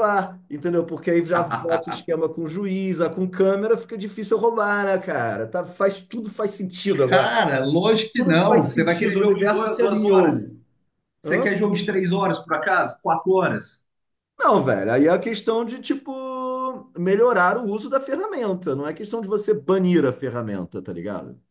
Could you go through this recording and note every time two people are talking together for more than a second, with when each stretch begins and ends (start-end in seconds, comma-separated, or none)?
8.2-10.6